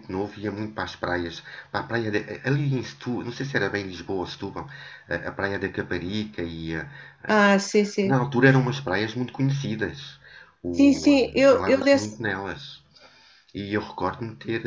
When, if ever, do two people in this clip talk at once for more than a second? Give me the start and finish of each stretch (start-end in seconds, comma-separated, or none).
10.7-12.1